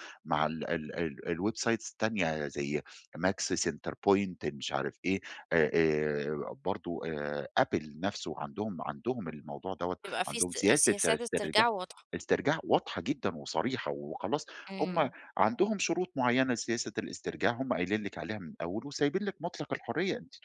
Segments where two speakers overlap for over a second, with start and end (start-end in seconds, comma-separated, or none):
10.0-11.7